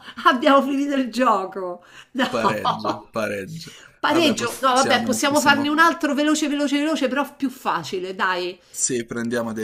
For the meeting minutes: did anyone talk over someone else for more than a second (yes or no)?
yes